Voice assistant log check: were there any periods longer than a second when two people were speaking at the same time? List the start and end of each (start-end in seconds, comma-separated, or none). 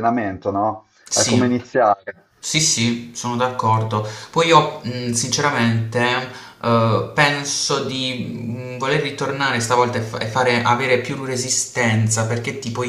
none